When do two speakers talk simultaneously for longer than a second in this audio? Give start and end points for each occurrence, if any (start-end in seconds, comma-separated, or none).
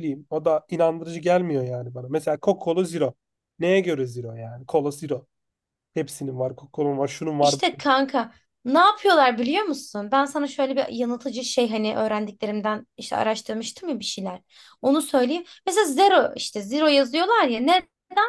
none